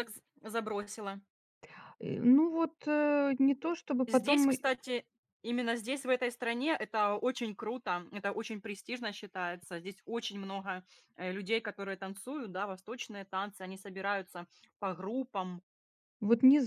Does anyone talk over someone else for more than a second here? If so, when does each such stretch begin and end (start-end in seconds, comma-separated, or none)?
none